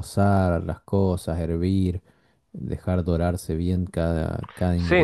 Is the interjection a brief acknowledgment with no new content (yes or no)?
no